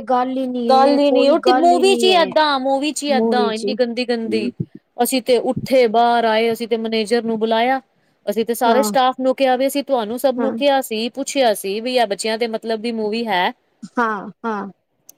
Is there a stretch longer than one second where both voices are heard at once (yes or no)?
yes